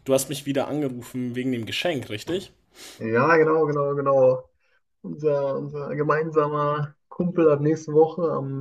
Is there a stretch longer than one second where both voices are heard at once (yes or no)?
no